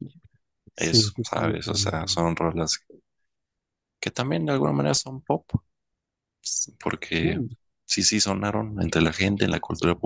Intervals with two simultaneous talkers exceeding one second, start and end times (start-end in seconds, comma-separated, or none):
0.8-2.2